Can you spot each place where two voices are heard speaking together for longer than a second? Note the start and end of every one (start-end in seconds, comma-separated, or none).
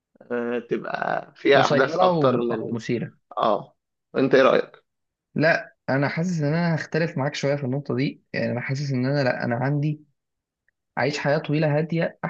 1.5-2.8